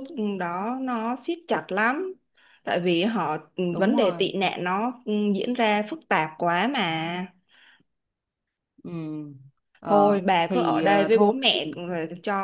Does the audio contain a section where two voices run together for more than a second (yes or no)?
yes